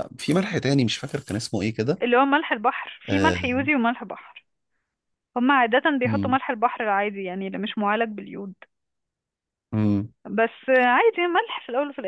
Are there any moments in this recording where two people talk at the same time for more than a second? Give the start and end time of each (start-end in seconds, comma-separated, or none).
none